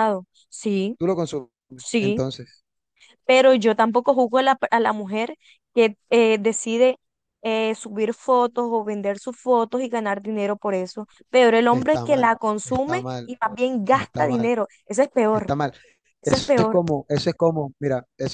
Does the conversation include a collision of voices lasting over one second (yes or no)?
yes